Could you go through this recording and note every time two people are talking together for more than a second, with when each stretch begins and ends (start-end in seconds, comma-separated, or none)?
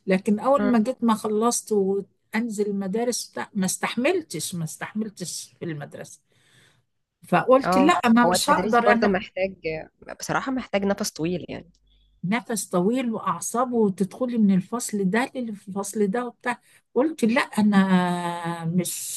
7.7-9.1